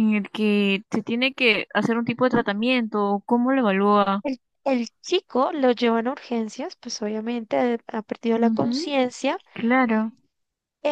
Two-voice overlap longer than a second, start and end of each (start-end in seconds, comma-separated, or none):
none